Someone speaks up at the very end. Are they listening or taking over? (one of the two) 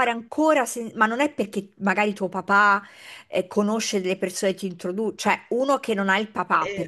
listening